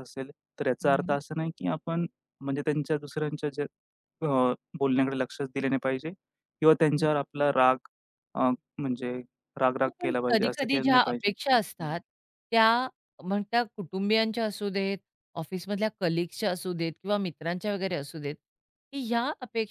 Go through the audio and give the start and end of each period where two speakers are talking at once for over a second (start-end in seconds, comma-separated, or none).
9.8-11.3